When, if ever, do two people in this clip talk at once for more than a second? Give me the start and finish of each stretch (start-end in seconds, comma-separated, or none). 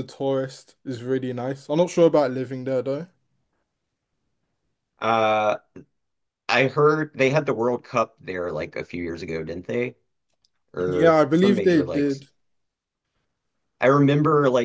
10.8-12.2